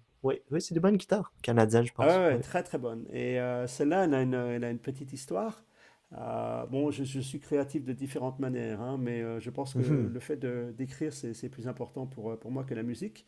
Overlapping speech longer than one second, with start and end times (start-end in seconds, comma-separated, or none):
none